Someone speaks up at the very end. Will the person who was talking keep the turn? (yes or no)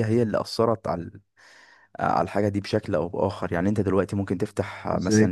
yes